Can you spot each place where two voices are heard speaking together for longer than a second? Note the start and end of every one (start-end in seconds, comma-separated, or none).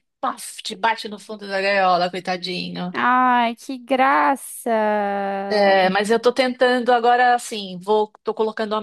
none